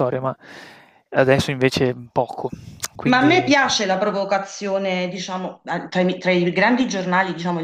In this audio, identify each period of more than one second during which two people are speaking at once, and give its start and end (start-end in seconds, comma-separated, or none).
none